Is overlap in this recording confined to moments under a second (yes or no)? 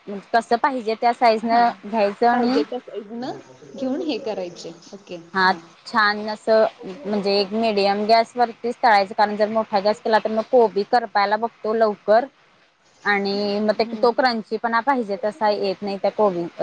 yes